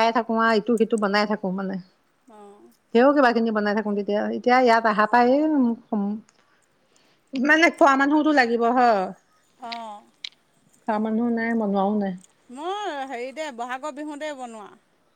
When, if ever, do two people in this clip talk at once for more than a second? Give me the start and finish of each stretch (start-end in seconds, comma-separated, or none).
none